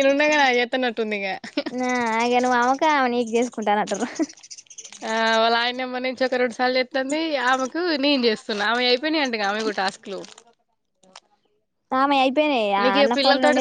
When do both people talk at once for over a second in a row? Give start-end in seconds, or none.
none